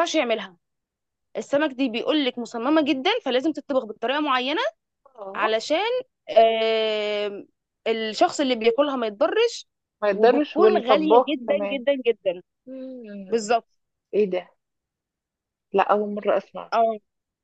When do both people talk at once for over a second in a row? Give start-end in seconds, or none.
10.1-11.8